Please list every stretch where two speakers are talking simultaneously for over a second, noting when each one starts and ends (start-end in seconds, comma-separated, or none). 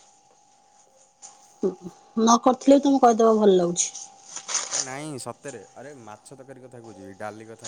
none